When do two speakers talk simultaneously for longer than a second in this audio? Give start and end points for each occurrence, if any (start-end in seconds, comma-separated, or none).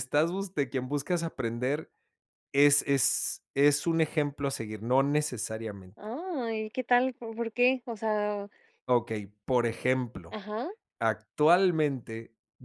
none